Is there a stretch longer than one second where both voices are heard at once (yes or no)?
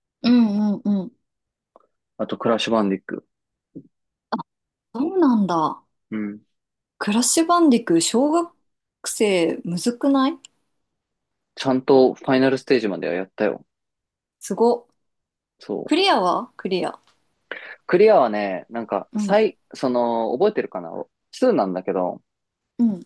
no